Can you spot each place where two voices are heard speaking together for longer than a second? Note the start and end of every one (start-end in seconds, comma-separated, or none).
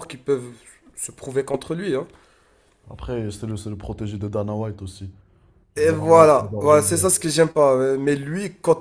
5.8-7.1